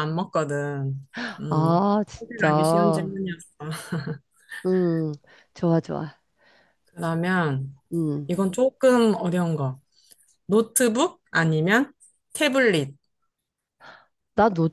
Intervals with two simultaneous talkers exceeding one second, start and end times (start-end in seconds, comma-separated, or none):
1.5-3.1